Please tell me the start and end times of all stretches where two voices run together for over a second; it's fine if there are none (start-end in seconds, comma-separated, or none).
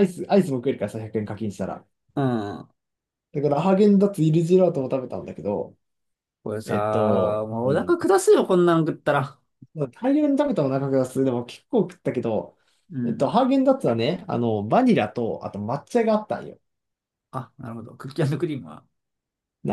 6.6-8.0